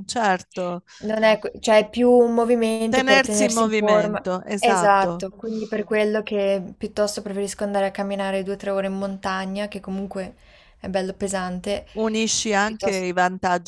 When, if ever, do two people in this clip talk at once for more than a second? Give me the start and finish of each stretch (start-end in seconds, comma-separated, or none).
2.9-5.3